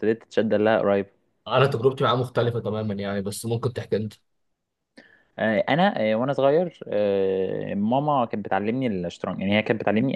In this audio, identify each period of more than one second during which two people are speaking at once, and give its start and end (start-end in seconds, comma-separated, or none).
none